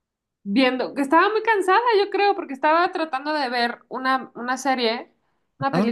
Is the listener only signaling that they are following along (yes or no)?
yes